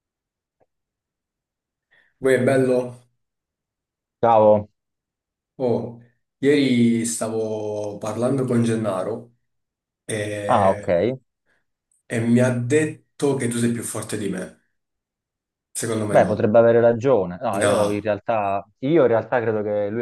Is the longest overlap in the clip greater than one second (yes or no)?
no